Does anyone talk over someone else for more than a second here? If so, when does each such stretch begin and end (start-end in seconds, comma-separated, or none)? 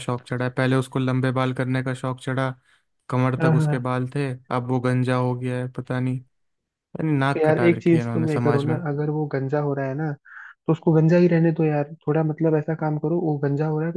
7.4-8.8